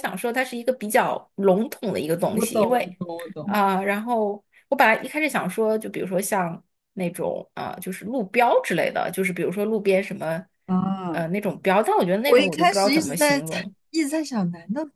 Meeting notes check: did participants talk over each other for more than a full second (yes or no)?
yes